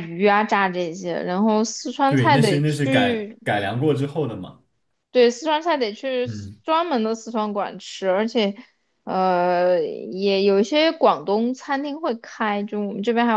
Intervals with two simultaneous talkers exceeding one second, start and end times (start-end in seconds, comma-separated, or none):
2.0-3.4